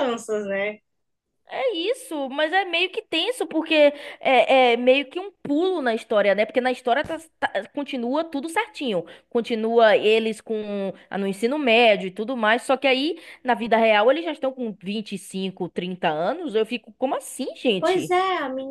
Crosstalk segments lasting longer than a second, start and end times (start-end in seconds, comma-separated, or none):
none